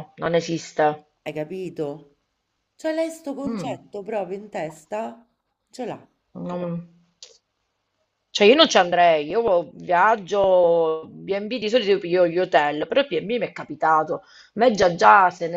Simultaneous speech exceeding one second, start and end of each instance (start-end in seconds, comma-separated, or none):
none